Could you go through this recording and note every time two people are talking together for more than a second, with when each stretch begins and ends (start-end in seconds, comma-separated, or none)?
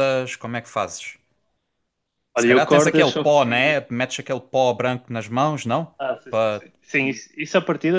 2.4-3.8